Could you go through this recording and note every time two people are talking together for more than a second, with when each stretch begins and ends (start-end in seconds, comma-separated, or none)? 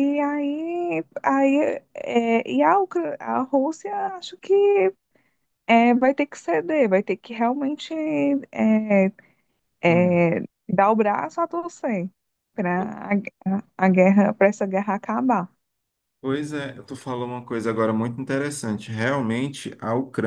none